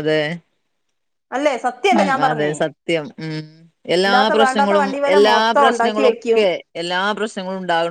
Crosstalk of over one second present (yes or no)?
yes